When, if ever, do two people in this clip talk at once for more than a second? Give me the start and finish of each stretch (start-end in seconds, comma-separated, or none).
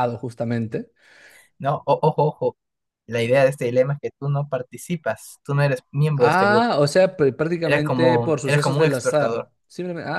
7.6-9.5